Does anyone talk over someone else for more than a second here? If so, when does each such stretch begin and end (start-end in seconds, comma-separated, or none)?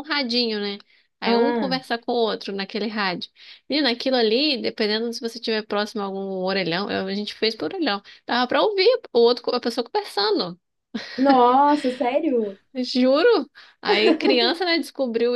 none